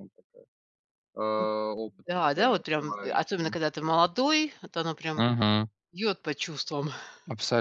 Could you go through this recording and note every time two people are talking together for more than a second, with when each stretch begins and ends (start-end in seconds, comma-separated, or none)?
2.1-3.6